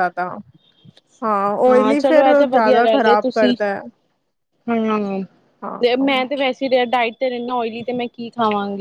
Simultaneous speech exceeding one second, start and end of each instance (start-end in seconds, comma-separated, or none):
none